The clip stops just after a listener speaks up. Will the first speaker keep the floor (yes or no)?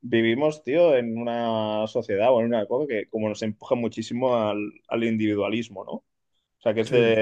no